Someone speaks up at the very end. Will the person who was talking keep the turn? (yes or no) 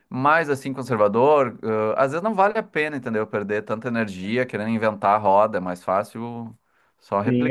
no